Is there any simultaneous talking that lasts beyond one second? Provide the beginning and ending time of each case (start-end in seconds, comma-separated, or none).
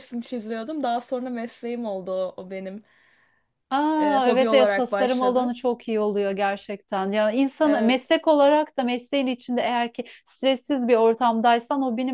4.0-5.5